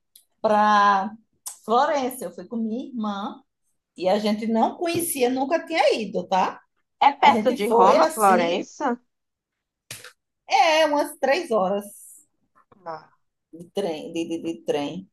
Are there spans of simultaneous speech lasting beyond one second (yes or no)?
yes